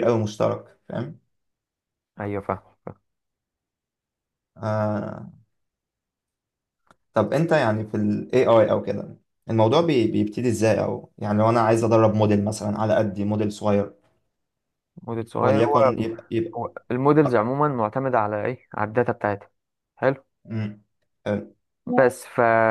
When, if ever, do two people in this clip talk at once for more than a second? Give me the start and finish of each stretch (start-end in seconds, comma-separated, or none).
none